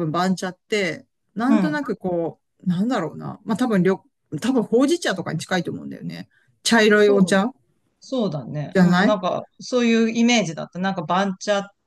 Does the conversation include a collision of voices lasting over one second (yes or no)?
no